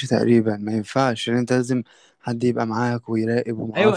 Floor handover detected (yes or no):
yes